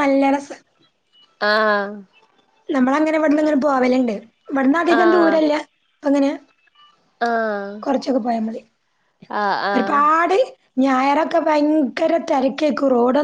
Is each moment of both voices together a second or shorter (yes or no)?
yes